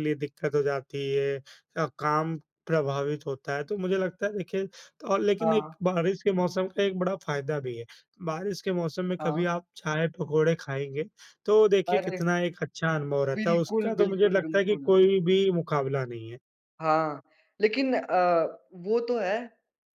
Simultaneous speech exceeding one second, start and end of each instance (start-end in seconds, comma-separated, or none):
13.4-14.9